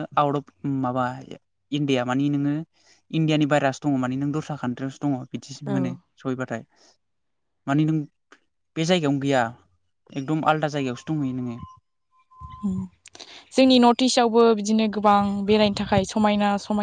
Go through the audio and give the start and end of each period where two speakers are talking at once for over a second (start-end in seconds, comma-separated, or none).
none